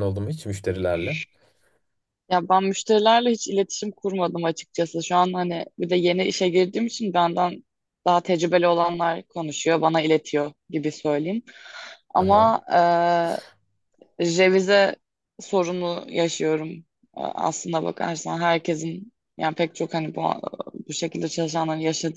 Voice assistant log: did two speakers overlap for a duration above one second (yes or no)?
no